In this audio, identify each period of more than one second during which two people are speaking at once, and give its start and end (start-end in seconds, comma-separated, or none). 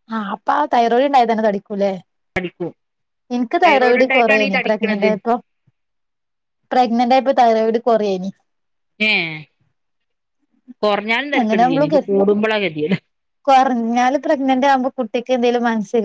3.6-5.1